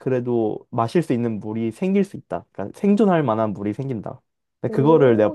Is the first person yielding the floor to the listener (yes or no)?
yes